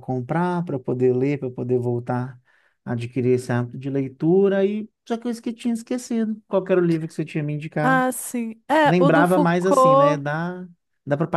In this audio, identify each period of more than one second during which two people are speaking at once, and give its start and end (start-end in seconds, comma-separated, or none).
8.8-10.2